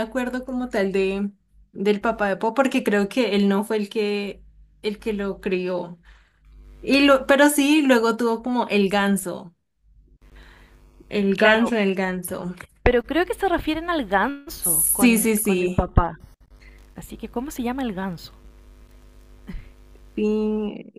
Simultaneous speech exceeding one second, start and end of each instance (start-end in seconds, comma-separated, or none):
14.6-15.8